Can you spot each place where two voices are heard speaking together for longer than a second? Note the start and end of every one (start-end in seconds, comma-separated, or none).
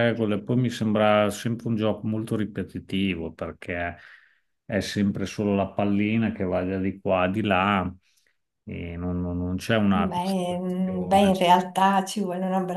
9.9-11.4